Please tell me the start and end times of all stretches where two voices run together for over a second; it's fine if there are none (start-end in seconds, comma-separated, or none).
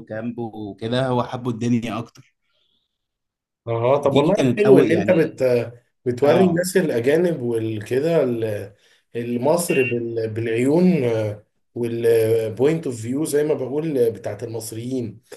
4.0-5.4